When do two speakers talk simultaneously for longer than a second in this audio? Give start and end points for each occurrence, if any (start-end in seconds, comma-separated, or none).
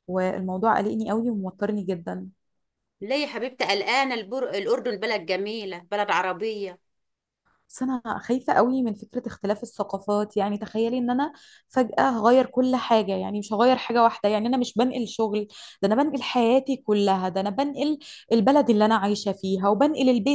none